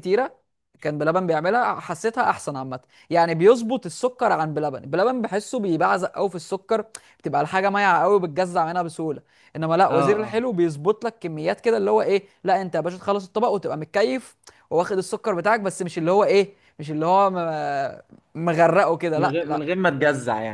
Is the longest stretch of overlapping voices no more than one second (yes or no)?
yes